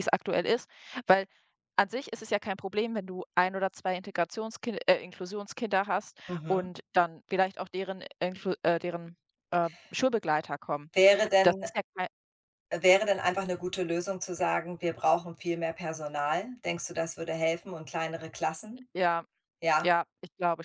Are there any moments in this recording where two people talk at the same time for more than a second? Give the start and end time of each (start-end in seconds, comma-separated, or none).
none